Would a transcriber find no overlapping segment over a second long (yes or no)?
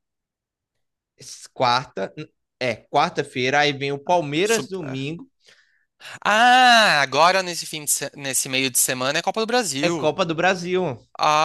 yes